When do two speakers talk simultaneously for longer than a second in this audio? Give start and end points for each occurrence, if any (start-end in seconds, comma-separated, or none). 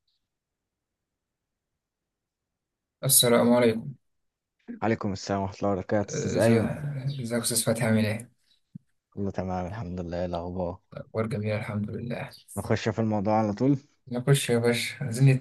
none